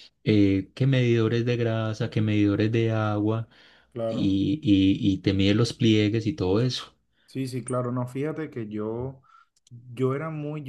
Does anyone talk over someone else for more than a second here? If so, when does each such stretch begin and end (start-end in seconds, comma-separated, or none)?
none